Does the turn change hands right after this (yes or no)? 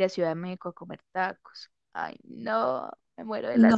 yes